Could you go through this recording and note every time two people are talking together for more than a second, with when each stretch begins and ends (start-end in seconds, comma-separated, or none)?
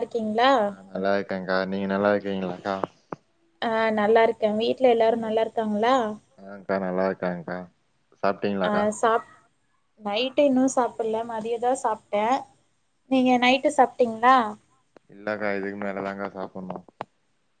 none